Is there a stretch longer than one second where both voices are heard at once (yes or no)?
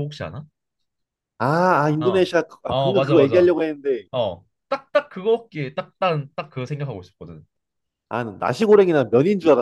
yes